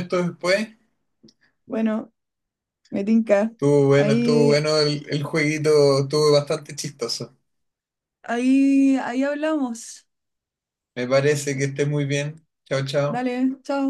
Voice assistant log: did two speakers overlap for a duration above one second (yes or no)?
no